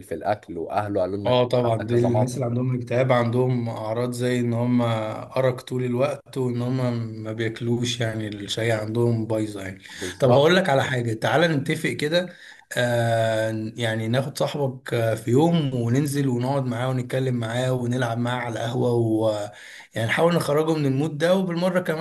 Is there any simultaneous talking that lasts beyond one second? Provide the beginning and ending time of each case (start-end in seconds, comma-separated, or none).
1.2-2.4